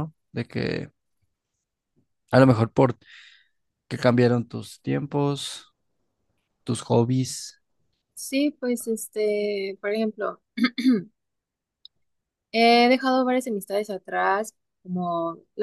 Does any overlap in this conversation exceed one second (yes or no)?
no